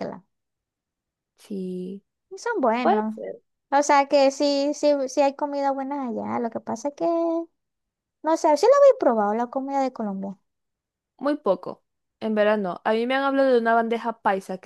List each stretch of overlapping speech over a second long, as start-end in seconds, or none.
none